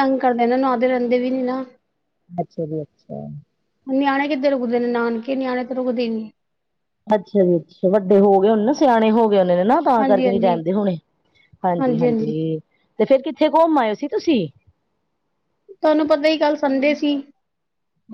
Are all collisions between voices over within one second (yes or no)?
yes